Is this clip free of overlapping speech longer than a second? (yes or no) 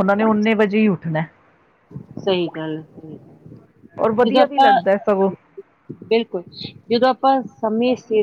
yes